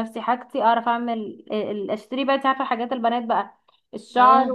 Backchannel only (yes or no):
yes